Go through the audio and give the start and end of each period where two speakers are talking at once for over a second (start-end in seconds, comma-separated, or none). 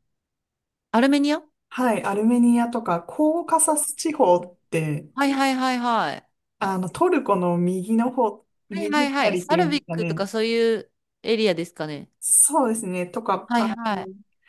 8.7-10.2